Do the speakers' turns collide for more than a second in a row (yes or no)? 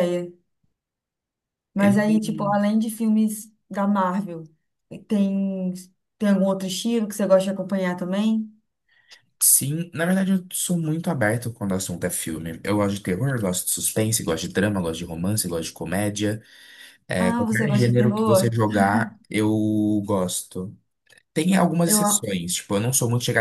yes